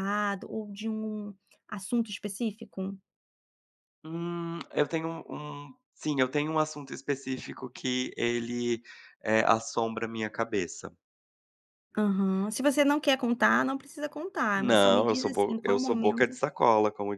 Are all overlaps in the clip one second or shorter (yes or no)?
no